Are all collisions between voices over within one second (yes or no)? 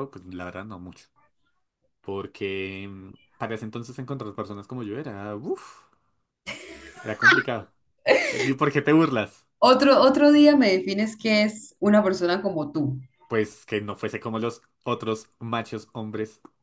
yes